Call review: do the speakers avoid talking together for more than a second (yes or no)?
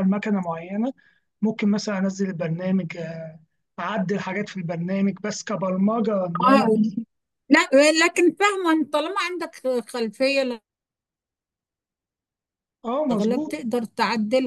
yes